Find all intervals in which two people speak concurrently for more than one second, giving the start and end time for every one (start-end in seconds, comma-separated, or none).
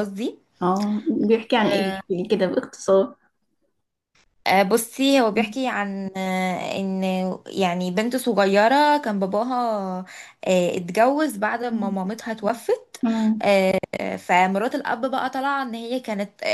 none